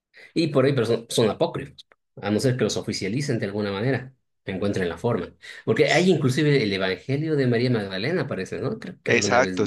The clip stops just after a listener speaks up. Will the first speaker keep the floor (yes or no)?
no